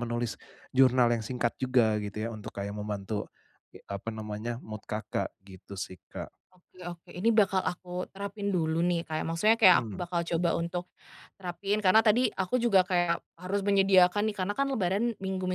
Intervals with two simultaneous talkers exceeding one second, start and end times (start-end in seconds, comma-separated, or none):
none